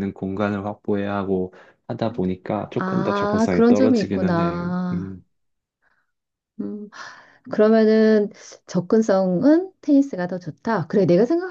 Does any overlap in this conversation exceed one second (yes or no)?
yes